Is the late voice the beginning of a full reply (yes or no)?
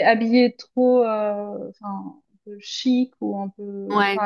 no